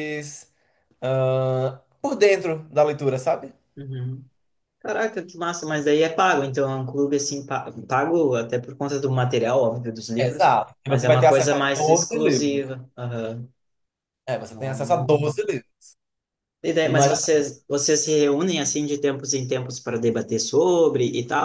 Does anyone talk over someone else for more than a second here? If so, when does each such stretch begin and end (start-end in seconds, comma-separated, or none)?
10.2-12.6